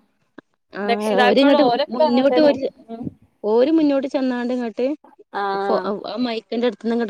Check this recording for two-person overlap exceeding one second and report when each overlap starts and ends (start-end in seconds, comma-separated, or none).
0.9-2.5